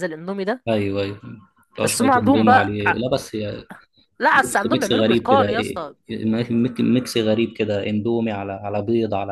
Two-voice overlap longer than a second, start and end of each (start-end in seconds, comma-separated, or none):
1.8-3.0, 4.5-5.9